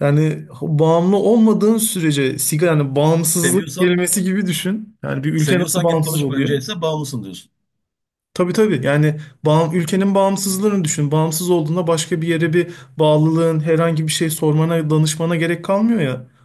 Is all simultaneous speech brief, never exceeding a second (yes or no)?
no